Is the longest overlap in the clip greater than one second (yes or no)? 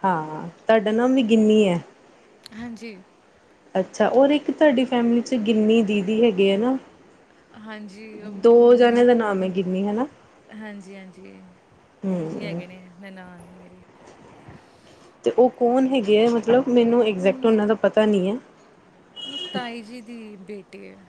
no